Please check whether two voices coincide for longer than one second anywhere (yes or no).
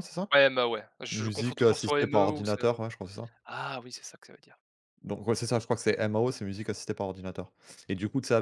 yes